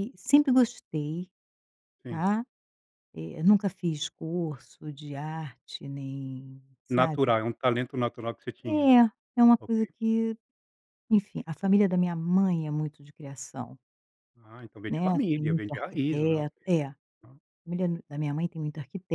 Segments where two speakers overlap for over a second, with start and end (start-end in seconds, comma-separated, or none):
14.9-16.4